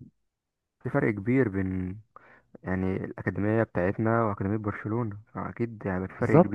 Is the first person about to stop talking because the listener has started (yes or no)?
yes